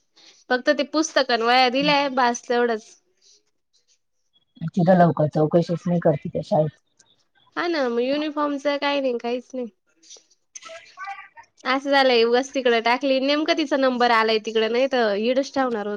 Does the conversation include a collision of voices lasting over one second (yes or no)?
no